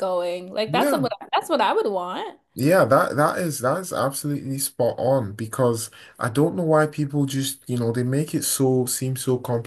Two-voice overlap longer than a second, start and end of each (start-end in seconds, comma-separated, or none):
none